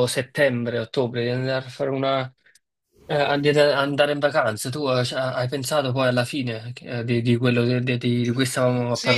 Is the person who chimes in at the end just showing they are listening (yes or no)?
no